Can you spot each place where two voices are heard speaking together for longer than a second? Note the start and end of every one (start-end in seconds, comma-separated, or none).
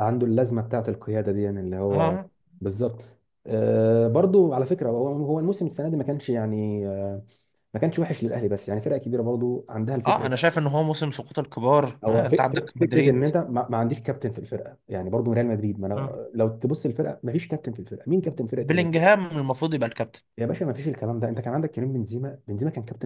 12.0-13.3